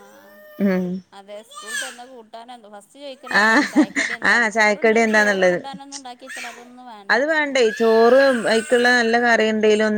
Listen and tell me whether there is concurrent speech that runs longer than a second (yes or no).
yes